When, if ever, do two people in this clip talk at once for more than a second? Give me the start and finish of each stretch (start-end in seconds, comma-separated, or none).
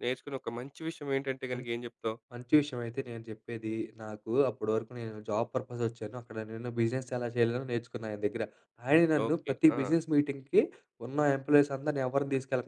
none